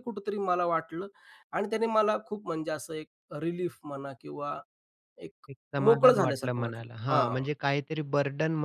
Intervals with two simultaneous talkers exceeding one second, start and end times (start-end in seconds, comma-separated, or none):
5.8-7.4